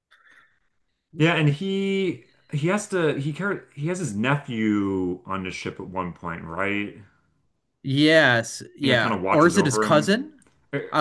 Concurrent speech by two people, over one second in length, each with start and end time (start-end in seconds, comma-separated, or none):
8.8-10.1